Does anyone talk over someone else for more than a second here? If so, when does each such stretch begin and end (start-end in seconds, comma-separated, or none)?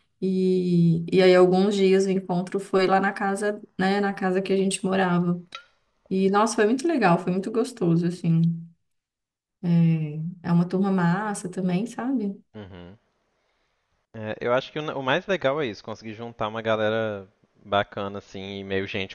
none